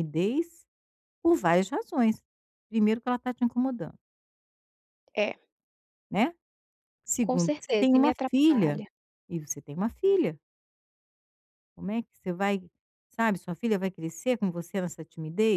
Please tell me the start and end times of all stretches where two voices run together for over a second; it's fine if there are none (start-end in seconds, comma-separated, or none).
7.2-8.8